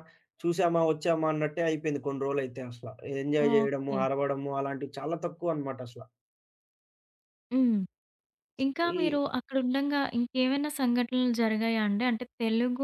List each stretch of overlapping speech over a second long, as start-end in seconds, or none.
none